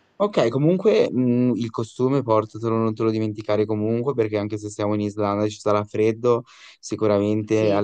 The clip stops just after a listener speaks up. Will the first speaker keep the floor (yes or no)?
yes